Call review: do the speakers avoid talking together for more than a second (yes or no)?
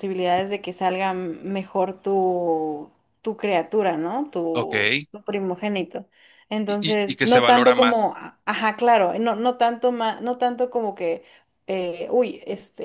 no